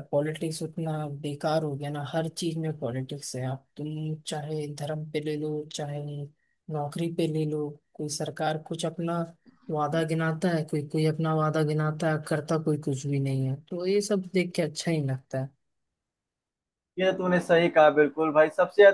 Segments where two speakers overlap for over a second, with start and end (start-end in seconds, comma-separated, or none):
none